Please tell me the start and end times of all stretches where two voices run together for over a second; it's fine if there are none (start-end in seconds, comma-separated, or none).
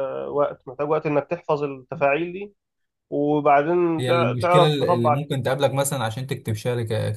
4.0-5.2